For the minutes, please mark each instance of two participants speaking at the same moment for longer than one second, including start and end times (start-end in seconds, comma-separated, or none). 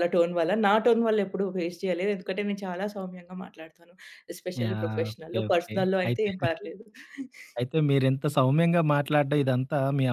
4.6-6.3